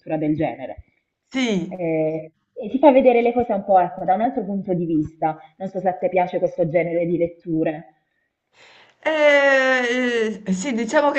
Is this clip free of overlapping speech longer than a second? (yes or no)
yes